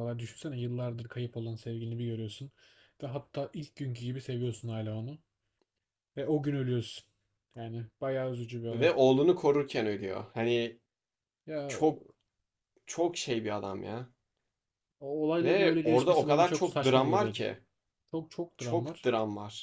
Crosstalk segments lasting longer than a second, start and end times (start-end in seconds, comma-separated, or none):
15.4-17.4